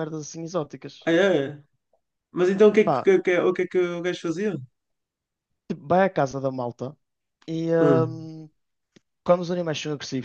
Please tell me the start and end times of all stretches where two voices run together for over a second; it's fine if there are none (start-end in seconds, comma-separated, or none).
none